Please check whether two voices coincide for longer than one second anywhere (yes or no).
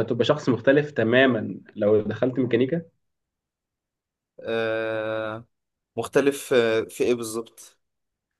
no